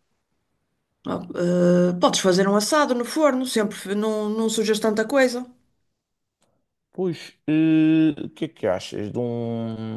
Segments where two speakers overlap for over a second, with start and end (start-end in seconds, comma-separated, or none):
none